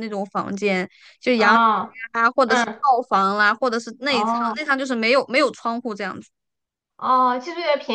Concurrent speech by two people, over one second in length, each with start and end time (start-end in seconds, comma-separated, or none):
none